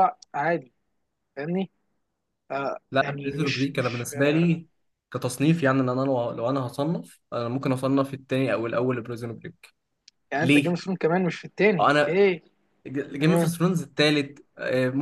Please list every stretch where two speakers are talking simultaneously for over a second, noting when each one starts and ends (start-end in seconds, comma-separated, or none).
2.9-4.5